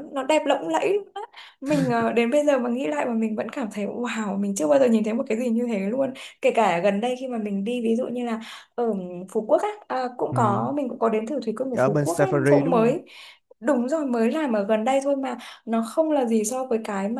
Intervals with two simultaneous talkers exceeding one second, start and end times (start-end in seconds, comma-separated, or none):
11.7-13.0